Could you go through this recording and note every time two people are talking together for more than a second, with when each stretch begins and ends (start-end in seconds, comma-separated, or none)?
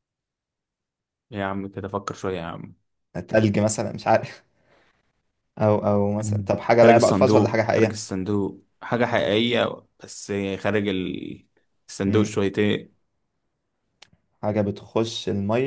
6.2-8.0